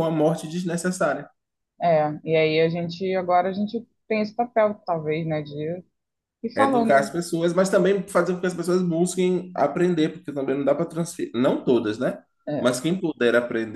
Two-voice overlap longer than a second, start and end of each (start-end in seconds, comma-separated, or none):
none